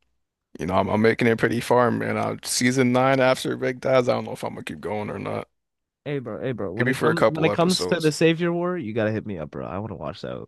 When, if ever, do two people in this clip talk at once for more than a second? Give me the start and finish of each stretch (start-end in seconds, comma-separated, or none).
6.8-8.1